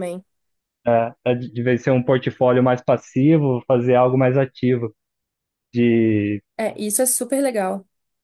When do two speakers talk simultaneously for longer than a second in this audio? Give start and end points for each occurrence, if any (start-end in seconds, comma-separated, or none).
none